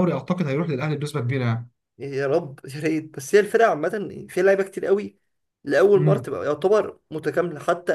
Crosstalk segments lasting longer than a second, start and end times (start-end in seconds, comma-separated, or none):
none